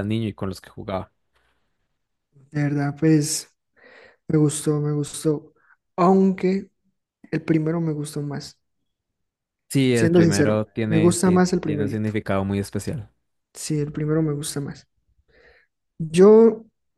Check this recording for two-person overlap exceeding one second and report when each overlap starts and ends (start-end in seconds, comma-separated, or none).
9.9-12.1